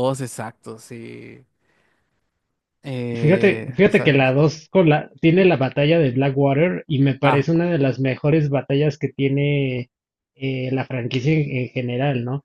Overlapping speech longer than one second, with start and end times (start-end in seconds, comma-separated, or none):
3.1-4.4